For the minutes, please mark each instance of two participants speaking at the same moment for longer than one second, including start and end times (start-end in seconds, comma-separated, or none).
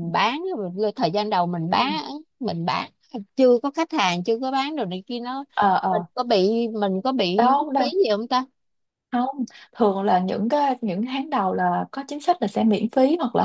none